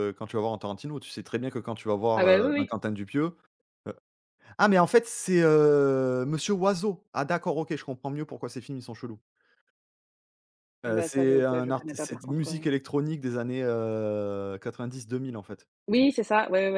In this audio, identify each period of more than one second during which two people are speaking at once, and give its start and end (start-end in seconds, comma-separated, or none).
10.9-12.6